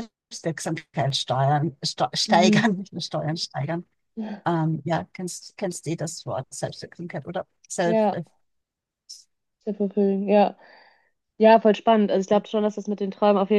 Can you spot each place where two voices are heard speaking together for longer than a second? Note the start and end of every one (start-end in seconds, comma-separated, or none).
none